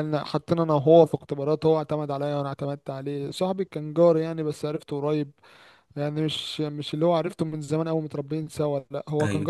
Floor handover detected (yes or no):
no